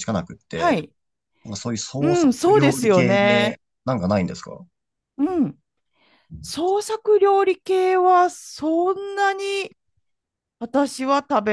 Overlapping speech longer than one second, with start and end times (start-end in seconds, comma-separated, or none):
2.0-3.5